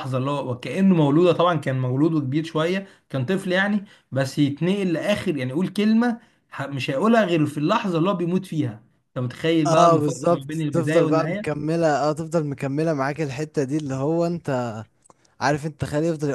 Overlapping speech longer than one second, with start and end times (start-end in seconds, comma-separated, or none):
9.7-11.6